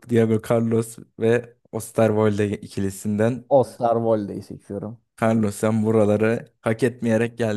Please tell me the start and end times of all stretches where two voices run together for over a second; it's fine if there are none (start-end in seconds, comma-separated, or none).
none